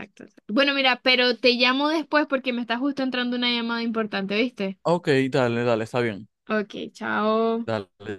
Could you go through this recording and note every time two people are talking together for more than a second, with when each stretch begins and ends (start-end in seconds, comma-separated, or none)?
none